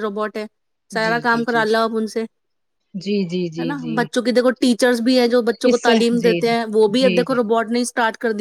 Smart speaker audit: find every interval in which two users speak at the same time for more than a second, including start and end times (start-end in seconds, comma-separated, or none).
5.7-7.4